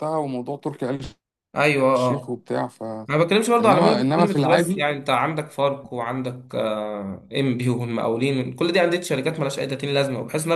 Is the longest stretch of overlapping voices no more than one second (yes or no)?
no